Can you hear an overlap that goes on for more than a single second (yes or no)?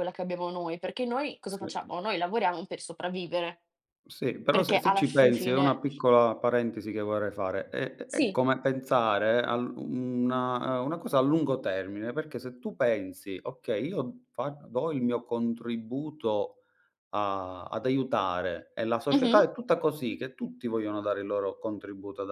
yes